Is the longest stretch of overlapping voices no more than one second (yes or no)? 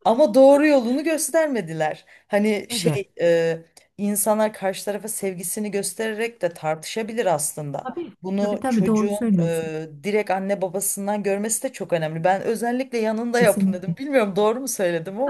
no